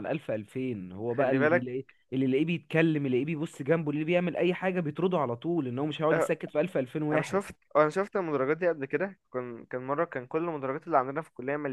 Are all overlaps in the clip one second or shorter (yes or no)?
yes